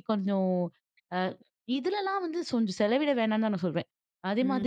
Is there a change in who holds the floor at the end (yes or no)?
yes